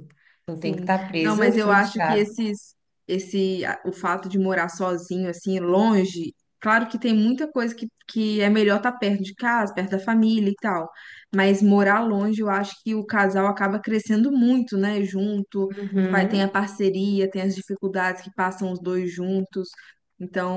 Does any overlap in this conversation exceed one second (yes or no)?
yes